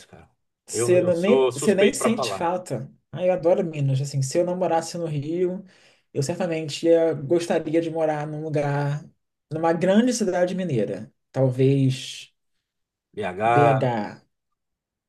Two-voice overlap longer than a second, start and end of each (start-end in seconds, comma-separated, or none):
0.7-2.5